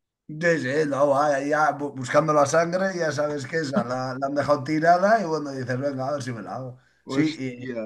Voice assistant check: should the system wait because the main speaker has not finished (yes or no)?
yes